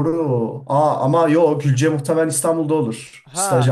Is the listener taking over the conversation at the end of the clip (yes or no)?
yes